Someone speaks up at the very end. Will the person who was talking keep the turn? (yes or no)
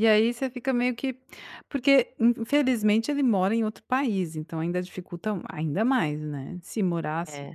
yes